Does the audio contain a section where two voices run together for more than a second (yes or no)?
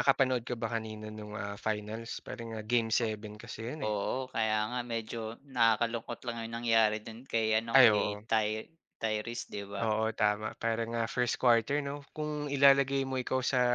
no